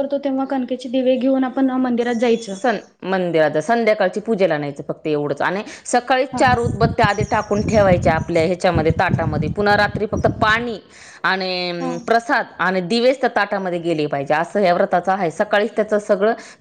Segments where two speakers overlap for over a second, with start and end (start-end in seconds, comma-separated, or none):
none